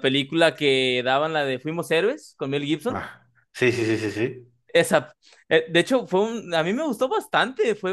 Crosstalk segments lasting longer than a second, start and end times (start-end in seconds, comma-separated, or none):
none